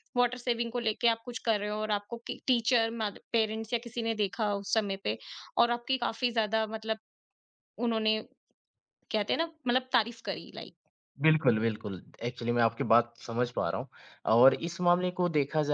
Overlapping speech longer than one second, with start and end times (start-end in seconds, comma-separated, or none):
none